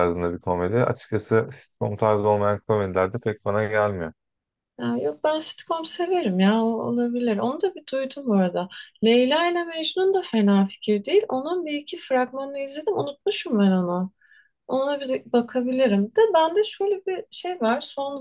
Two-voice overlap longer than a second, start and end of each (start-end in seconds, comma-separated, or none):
none